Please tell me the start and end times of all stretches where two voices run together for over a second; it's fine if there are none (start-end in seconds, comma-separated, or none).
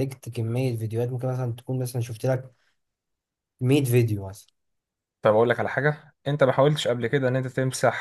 none